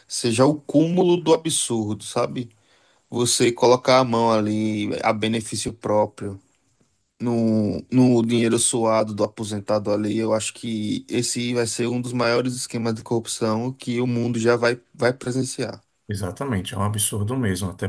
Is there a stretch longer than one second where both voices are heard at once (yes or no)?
no